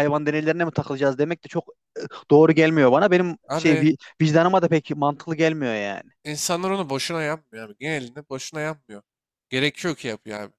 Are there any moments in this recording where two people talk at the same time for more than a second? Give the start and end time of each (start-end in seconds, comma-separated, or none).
none